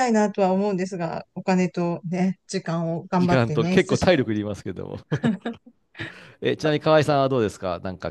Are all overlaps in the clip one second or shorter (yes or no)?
no